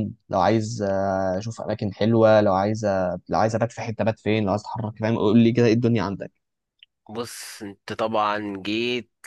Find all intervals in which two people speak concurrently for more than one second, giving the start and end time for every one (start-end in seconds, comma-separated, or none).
none